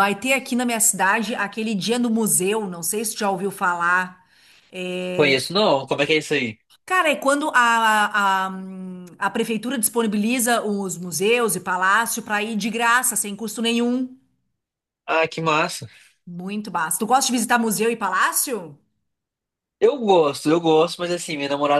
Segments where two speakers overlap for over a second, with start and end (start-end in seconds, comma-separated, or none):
none